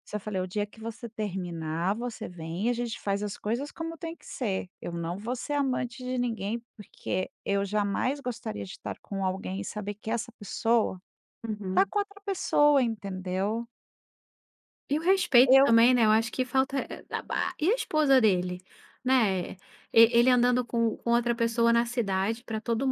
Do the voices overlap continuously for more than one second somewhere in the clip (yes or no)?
no